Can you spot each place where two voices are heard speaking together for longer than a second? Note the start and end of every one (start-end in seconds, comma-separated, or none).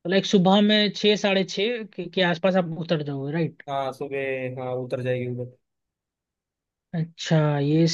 none